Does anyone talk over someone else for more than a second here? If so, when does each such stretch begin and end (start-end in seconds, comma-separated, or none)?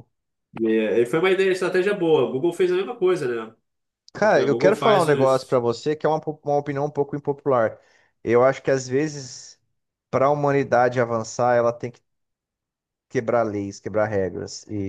4.2-5.6